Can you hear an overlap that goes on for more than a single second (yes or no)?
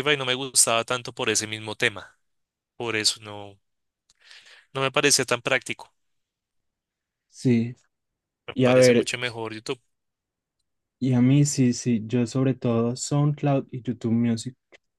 no